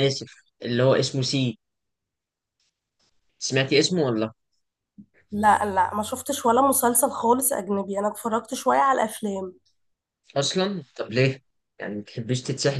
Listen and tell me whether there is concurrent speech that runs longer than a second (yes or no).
no